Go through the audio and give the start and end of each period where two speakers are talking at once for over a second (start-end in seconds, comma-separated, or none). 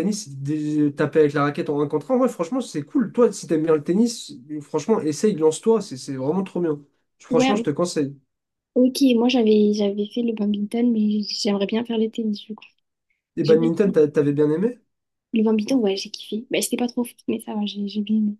none